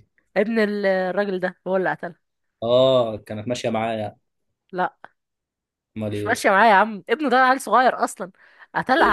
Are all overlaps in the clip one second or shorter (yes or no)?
yes